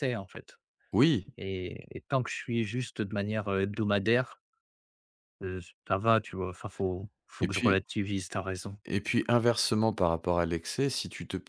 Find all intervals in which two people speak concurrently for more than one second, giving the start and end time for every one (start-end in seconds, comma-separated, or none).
none